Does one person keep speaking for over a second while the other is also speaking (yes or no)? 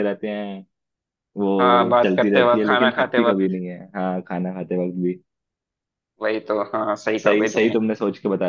yes